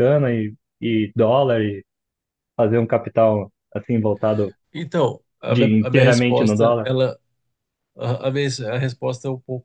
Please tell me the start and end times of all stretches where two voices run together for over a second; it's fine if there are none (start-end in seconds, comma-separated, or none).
5.5-6.9